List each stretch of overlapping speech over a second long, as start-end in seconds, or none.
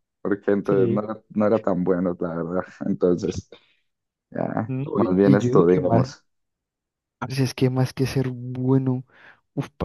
4.7-6.2